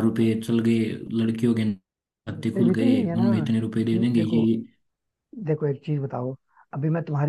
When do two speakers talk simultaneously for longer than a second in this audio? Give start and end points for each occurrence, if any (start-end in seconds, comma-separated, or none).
2.3-4.5